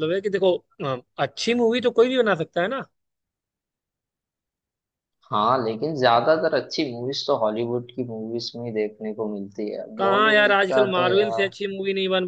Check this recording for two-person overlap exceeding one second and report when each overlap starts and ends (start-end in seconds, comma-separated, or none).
10.0-11.5